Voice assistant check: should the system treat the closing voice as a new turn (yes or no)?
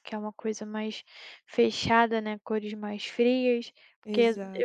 no